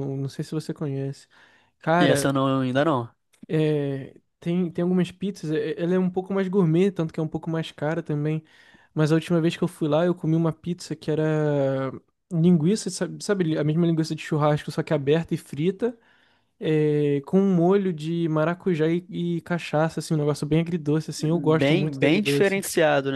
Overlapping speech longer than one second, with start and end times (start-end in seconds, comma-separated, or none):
21.2-22.6